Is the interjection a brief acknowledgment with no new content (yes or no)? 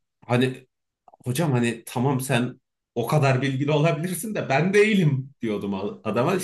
yes